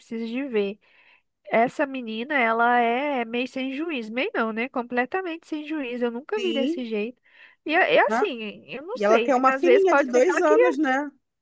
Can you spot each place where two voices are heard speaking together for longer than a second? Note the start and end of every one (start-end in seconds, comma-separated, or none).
8.9-10.8